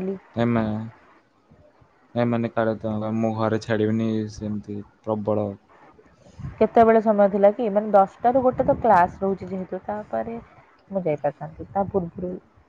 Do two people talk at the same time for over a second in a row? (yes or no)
no